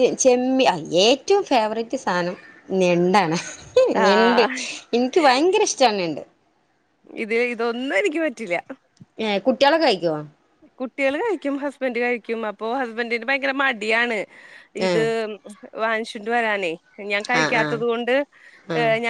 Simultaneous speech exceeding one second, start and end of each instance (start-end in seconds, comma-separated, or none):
none